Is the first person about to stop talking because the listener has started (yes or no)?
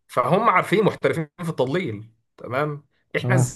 no